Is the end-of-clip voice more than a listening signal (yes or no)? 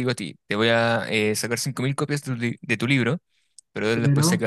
no